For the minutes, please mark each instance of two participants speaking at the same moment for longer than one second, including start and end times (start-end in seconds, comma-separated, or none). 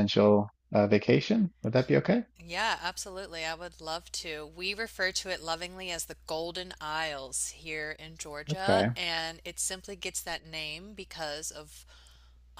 none